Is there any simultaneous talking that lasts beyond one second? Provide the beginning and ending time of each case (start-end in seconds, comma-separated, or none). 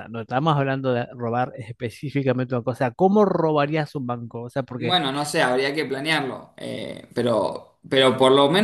none